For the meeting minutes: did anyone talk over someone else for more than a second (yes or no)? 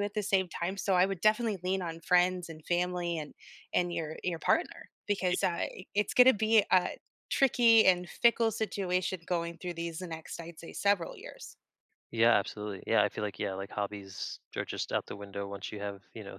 no